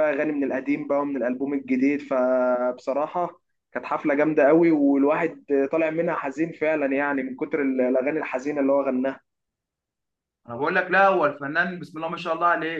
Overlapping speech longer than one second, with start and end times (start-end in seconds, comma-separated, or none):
none